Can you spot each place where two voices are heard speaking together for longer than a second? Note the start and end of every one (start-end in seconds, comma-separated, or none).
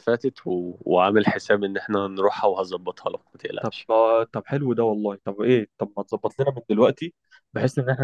none